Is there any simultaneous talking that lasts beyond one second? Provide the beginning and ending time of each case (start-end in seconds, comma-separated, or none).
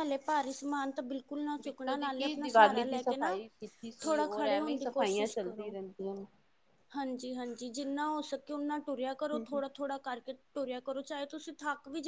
1.6-3.4, 4.0-5.7